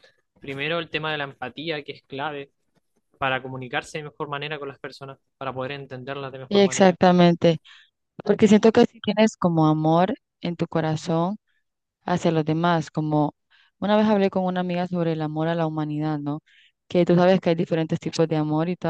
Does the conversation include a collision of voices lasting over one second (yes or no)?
no